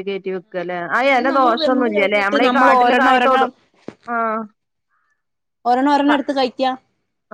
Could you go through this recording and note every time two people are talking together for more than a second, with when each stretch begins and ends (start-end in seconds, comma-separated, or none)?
1.2-3.5